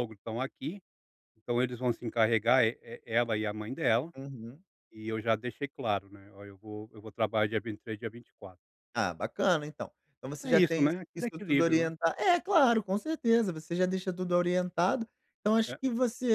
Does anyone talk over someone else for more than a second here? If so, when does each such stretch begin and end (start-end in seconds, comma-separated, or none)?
10.4-11.9